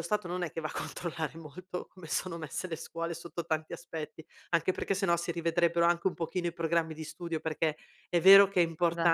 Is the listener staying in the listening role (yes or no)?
yes